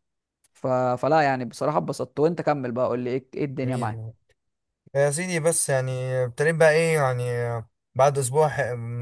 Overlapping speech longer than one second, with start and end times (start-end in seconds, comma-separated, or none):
none